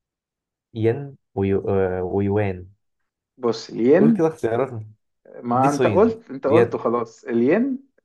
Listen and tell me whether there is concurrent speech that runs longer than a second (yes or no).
yes